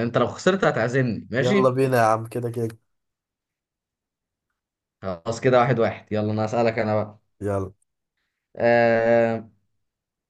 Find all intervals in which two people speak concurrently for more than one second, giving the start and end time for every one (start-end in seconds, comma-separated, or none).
none